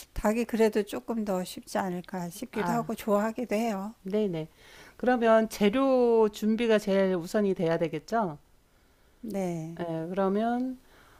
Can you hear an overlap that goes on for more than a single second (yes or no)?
no